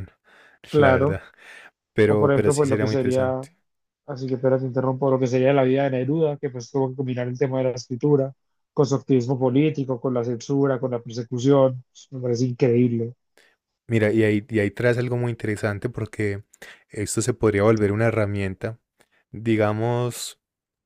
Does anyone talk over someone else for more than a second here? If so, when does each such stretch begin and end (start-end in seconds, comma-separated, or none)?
2.1-3.5